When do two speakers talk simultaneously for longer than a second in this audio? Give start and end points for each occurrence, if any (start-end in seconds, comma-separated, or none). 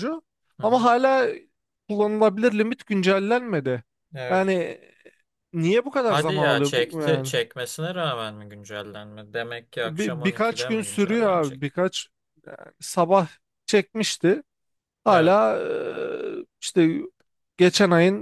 6.0-7.3, 9.8-11.7